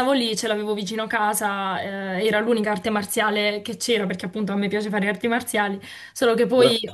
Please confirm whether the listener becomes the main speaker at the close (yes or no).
no